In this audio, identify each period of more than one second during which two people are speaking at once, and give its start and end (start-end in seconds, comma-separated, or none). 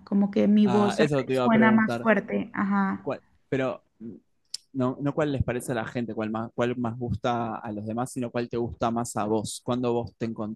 0.6-2.1